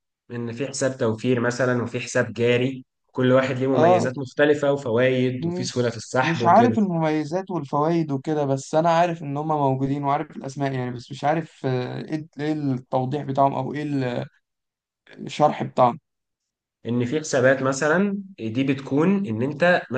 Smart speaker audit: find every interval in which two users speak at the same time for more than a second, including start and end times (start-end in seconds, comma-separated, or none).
5.4-6.8